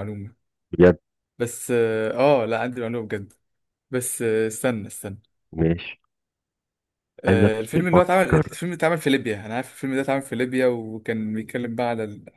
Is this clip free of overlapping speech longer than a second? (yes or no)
no